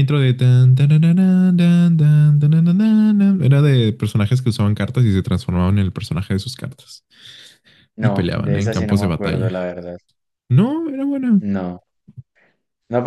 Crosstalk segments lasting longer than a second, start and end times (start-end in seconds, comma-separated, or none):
8.0-9.5